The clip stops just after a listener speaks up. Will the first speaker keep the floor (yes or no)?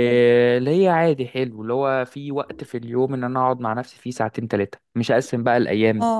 yes